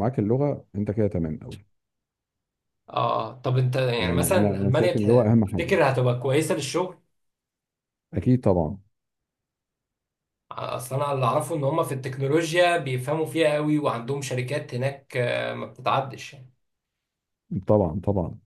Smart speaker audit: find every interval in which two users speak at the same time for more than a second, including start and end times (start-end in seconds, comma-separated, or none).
4.0-5.8